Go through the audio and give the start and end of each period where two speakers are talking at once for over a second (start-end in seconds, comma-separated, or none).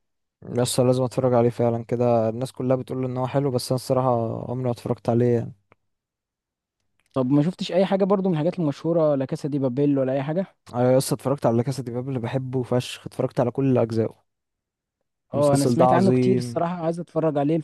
15.3-16.6